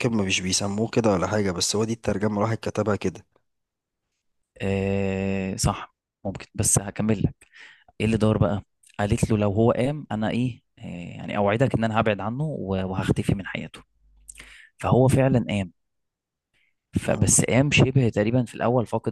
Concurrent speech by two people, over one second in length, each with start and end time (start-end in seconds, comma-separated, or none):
none